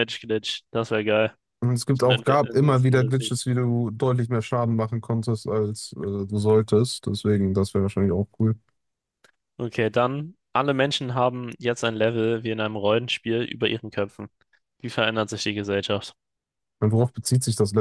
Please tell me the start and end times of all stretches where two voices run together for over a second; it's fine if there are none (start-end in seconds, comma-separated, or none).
1.9-3.3